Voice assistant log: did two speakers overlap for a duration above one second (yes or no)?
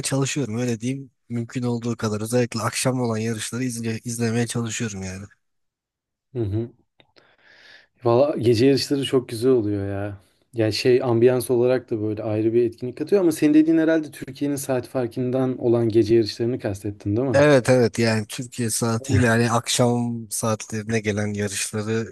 no